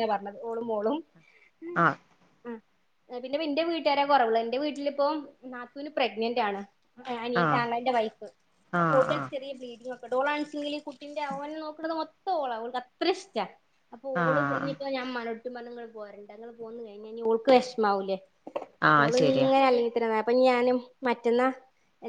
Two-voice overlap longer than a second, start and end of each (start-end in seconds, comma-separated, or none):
none